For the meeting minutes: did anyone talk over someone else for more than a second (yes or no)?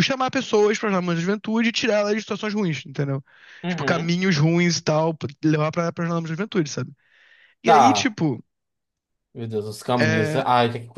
no